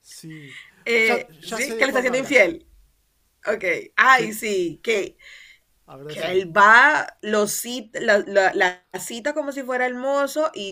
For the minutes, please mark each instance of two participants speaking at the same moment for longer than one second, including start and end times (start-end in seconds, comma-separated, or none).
1.0-2.6